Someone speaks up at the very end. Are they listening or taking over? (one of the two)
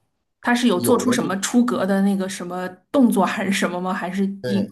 taking over